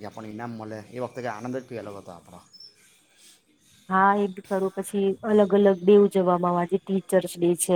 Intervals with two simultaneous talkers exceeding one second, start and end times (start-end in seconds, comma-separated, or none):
none